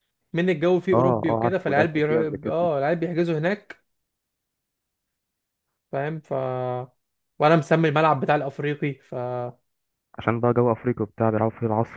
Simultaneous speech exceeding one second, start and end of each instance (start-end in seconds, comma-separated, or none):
0.9-2.5